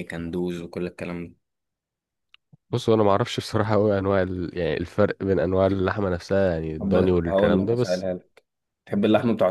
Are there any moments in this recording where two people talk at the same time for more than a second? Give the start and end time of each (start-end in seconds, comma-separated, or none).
6.8-8.1